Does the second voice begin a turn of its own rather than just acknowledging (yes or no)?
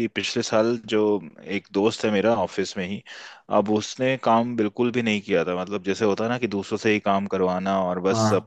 no